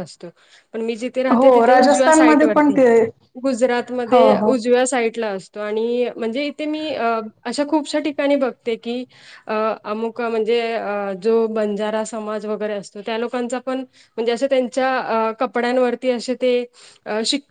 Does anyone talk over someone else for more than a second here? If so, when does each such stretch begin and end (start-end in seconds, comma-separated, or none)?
1.4-2.8